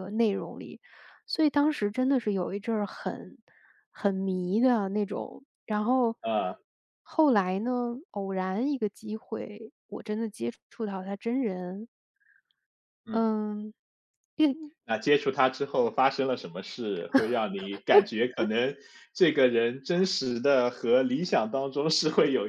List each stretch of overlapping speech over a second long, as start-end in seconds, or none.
none